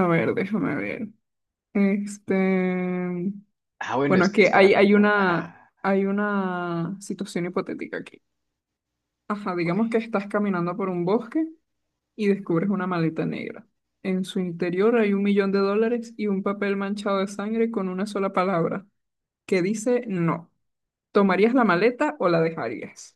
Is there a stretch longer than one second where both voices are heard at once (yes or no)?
yes